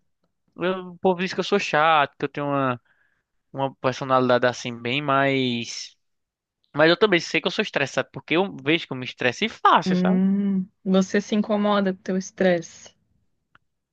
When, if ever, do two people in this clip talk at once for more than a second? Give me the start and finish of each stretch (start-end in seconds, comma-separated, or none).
none